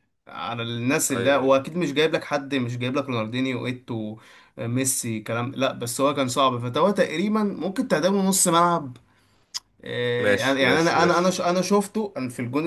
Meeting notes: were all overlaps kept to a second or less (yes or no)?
no